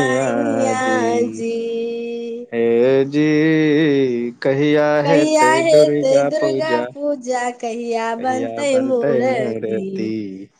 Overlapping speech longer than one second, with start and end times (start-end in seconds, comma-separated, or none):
5.1-6.8